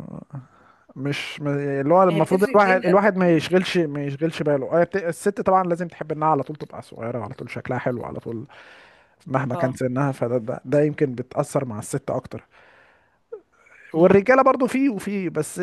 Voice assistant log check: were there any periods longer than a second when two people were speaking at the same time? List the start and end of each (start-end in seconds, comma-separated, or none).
2.1-3.6